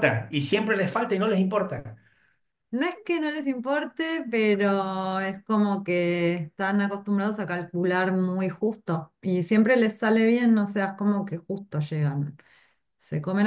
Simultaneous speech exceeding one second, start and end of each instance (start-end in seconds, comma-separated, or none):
none